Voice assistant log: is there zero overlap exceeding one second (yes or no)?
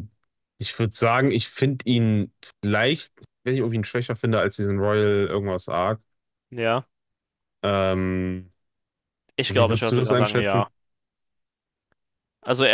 no